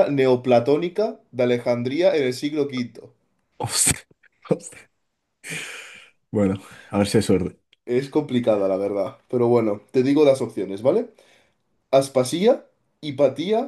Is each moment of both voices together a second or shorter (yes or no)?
yes